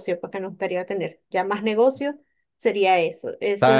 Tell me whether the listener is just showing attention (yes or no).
no